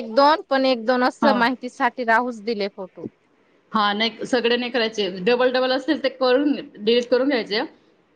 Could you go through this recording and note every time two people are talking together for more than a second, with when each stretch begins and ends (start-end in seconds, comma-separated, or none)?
none